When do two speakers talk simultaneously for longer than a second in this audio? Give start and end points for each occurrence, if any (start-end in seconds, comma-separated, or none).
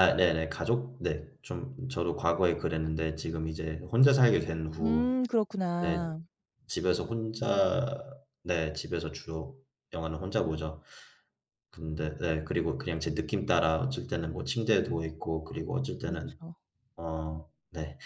none